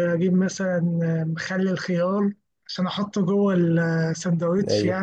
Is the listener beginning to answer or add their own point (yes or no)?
yes